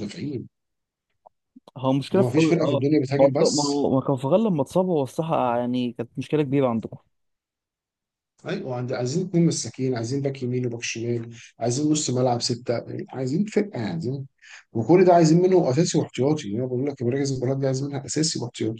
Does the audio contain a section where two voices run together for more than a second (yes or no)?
yes